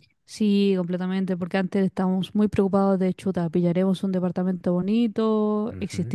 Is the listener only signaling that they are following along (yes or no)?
yes